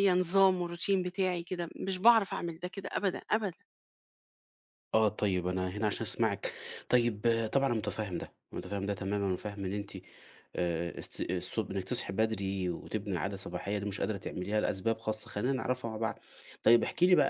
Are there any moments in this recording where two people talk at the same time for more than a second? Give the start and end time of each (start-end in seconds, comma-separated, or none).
none